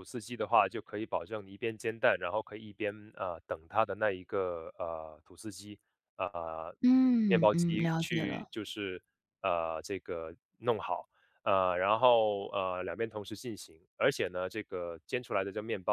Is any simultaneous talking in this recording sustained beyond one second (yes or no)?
yes